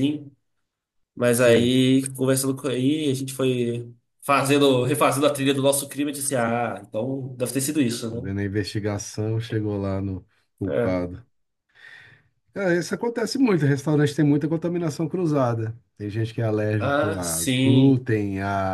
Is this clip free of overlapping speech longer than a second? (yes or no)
no